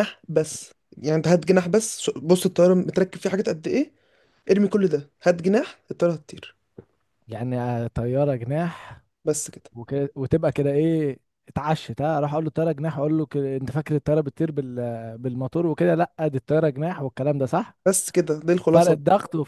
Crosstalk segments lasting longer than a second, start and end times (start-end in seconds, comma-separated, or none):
none